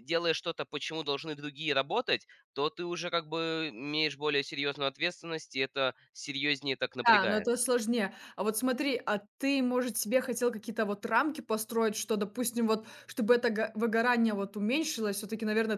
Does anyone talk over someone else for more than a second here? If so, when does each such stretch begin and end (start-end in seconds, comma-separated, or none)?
none